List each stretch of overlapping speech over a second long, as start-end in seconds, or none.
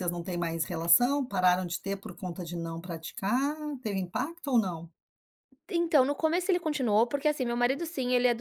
none